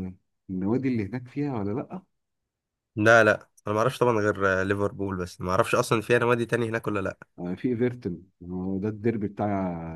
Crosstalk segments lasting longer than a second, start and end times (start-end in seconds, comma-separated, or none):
none